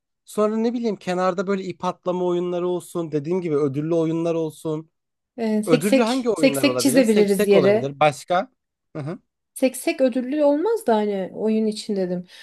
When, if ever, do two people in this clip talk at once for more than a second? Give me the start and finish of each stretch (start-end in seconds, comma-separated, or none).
5.7-7.9